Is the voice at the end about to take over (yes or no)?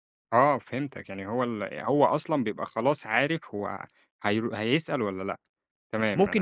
yes